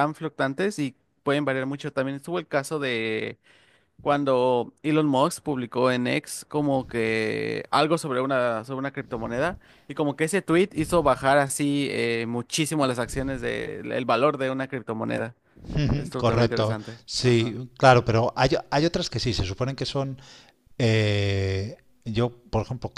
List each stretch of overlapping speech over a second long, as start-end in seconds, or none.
15.9-17.6